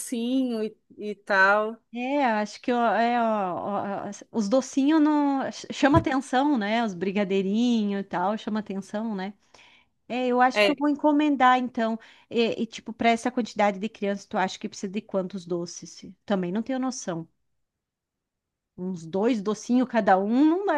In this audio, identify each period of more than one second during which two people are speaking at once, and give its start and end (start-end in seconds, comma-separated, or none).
none